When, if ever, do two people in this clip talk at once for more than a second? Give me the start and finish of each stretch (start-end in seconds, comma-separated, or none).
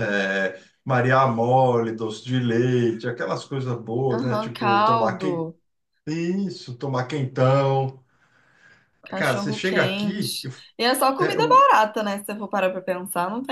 4.1-5.5, 9.2-10.5